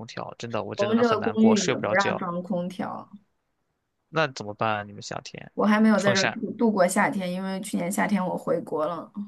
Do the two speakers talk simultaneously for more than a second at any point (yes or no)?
yes